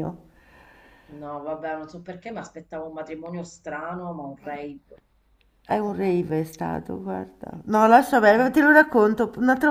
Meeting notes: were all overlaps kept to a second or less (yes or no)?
yes